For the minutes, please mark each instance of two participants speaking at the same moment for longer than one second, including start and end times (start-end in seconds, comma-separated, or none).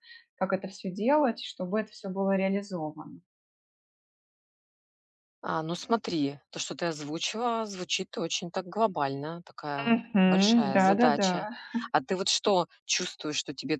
9.9-11.3